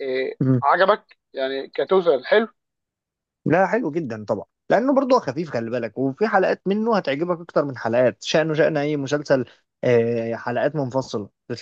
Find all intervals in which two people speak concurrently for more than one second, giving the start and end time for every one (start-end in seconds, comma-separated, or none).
none